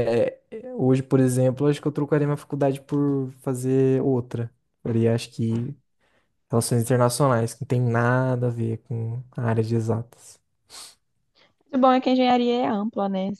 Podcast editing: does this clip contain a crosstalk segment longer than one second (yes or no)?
no